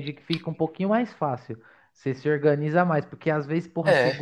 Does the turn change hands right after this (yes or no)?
no